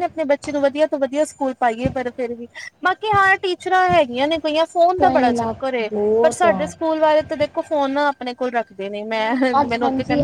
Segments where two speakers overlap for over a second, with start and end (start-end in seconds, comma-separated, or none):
5.0-6.7